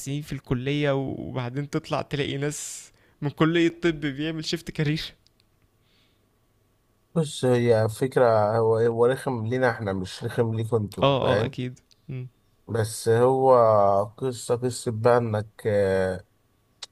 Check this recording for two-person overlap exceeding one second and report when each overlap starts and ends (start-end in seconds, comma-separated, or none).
none